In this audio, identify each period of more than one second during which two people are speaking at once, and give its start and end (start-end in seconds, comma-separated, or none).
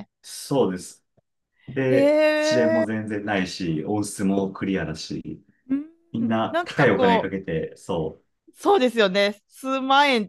6.1-7.3